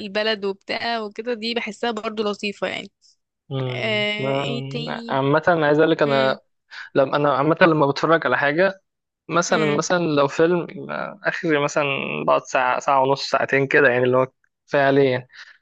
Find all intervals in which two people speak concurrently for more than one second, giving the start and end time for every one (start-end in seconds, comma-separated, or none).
3.7-5.2